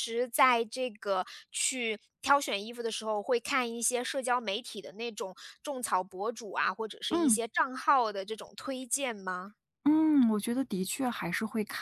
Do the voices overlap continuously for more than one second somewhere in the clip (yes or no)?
no